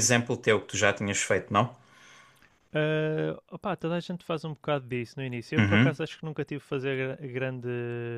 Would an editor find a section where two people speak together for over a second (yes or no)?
no